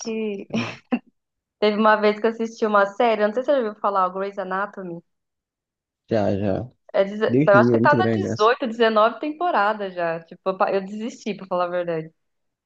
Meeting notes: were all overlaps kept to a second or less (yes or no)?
no